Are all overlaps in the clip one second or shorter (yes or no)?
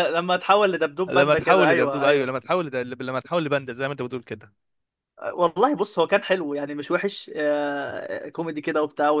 no